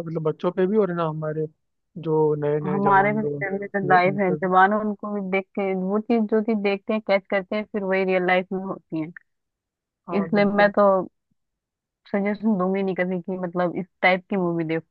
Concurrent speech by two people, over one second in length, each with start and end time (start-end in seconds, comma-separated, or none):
2.7-4.5